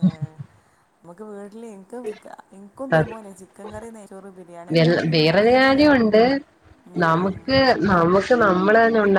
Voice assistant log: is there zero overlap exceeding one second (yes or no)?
yes